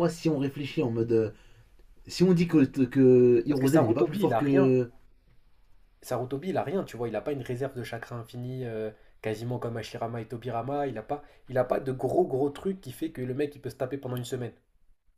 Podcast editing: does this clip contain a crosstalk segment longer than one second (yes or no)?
yes